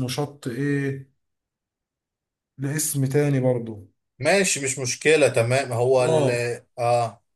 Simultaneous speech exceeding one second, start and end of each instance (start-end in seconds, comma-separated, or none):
none